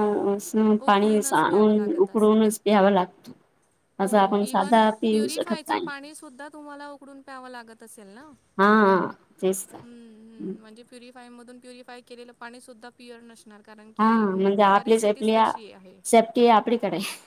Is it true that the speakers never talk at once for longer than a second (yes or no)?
no